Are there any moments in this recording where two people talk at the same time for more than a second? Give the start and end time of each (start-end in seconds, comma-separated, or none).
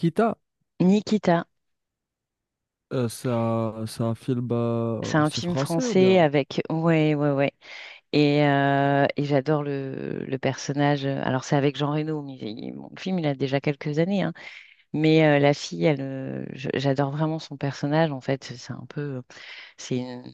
5.0-6.2